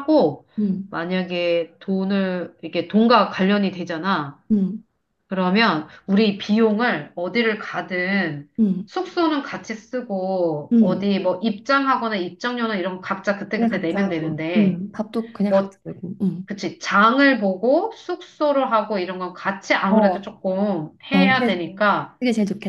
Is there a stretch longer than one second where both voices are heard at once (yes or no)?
yes